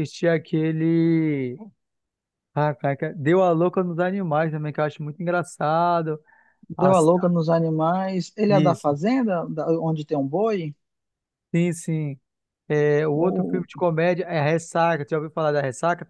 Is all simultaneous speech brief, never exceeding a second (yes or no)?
yes